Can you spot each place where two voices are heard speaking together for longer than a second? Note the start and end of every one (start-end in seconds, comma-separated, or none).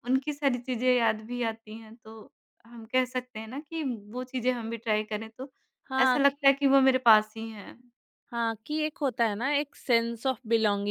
none